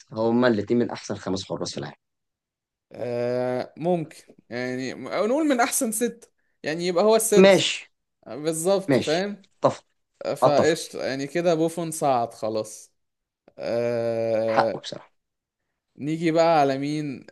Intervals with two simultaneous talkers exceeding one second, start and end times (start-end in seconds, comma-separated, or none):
none